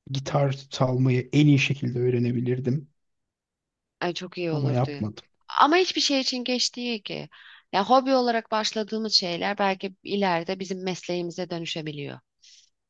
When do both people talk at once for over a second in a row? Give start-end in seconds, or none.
none